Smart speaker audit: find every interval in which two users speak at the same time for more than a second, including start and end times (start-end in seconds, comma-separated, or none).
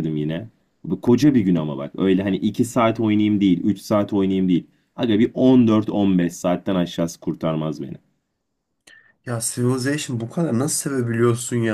none